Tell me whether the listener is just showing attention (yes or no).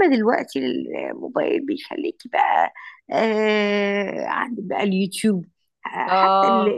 yes